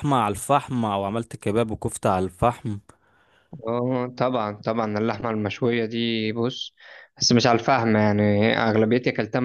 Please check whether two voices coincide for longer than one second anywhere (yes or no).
no